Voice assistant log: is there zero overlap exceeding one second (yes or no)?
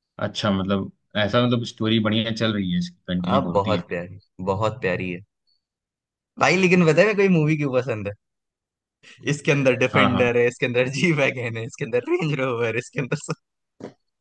yes